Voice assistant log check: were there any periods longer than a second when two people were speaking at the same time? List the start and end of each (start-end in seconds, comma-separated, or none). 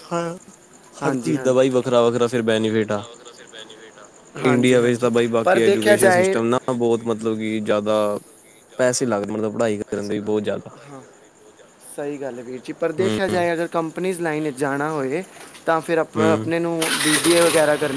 4.5-6.4